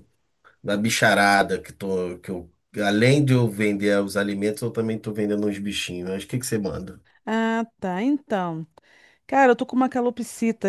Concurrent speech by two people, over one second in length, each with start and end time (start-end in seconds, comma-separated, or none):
none